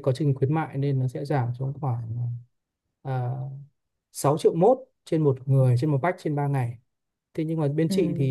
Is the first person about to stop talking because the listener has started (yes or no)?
no